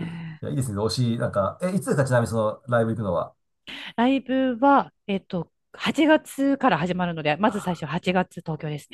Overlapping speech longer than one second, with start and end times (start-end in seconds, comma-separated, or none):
none